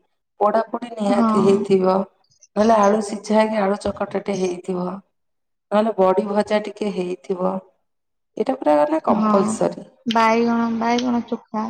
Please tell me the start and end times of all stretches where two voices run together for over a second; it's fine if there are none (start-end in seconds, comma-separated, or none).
none